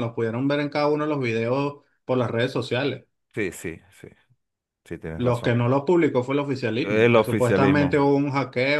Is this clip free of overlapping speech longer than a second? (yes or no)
no